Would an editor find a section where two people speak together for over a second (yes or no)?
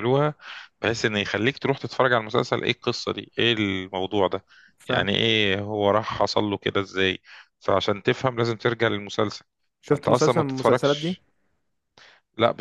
yes